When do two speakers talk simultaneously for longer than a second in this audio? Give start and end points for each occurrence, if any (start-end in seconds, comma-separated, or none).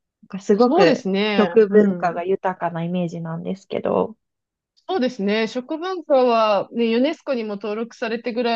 0.5-2.2